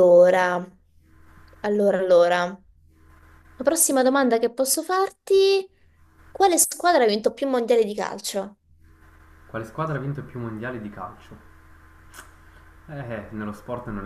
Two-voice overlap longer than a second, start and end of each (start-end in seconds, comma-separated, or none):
none